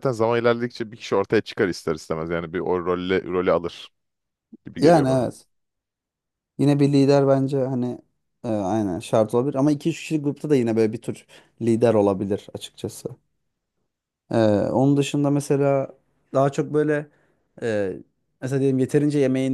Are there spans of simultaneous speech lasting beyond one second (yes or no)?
no